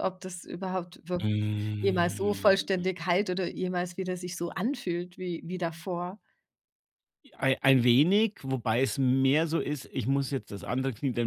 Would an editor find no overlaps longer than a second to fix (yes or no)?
no